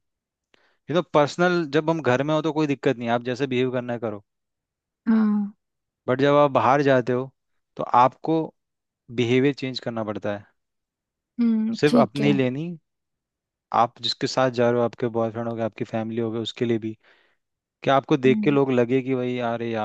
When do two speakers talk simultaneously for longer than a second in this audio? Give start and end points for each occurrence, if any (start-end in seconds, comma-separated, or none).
none